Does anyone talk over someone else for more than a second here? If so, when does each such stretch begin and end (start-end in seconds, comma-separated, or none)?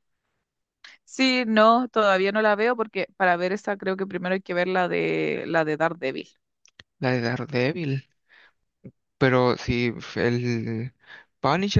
none